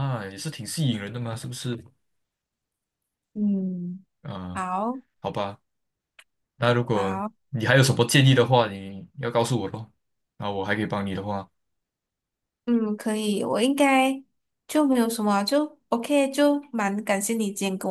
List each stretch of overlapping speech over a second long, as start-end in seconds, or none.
none